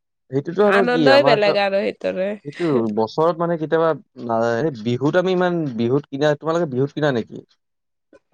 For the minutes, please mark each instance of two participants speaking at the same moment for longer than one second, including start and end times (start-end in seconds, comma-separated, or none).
0.8-2.3